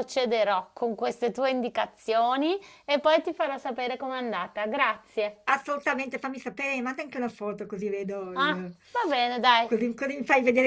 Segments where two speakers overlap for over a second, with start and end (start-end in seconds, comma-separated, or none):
none